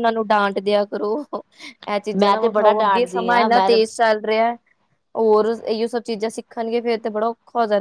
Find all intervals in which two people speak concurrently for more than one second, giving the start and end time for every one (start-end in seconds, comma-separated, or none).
2.2-3.7